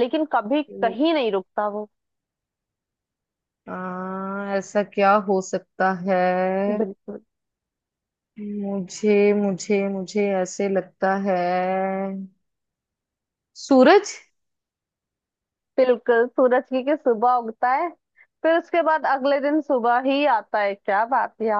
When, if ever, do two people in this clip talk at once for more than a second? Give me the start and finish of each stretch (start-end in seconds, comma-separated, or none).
none